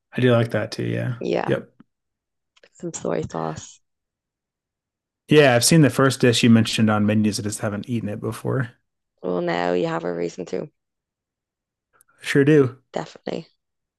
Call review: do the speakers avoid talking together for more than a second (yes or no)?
yes